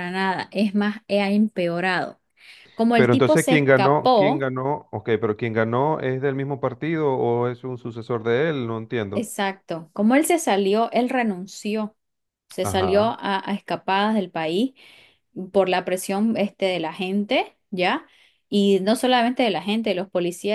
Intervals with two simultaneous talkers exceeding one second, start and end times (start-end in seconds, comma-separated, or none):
2.9-4.5